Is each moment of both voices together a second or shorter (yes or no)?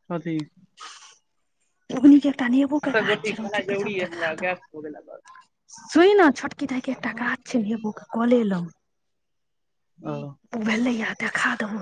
no